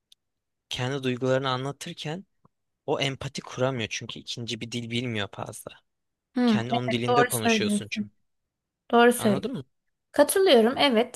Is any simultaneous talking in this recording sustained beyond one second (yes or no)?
yes